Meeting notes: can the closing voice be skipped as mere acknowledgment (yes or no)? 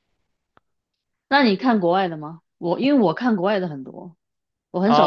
no